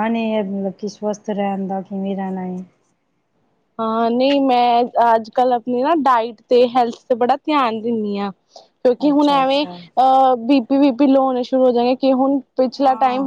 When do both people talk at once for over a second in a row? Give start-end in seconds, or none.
none